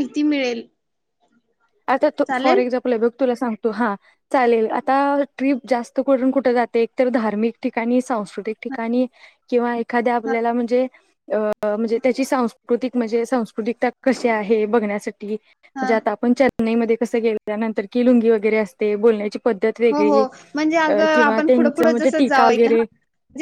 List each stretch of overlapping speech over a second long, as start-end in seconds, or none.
20.9-22.8